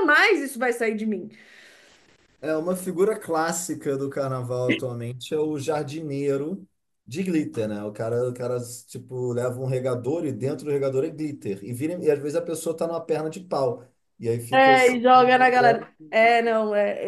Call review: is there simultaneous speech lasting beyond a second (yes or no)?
no